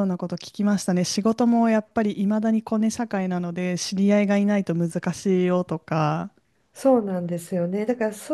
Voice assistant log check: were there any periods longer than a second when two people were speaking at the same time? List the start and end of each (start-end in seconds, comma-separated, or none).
none